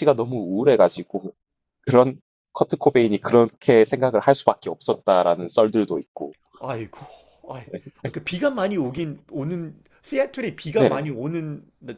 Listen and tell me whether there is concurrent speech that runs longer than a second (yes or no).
no